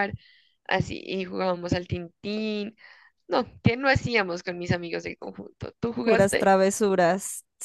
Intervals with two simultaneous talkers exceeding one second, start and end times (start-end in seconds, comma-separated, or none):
none